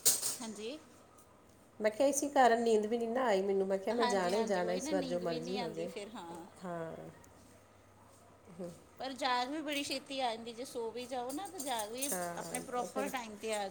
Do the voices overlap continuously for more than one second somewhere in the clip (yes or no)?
yes